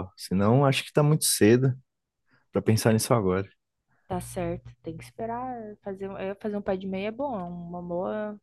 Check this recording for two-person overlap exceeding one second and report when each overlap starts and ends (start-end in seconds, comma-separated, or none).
none